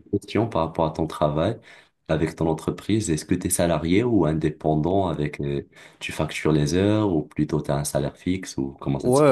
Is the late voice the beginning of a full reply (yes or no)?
yes